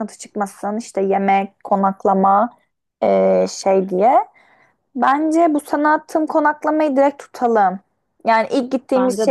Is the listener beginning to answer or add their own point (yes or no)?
no